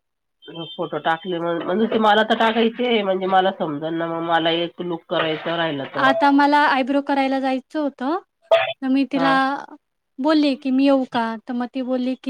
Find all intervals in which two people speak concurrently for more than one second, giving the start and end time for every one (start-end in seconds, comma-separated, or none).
none